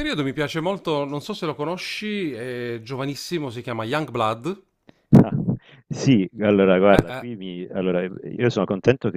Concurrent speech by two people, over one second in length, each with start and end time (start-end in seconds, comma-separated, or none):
none